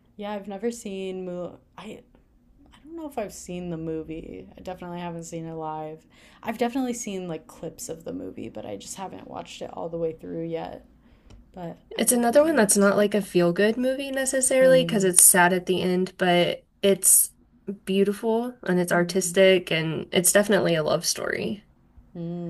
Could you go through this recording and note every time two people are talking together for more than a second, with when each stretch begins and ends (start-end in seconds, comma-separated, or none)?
11.9-13.3